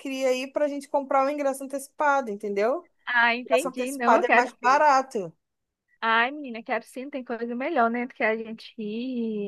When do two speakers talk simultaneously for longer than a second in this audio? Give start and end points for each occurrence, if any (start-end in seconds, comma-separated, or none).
3.4-4.8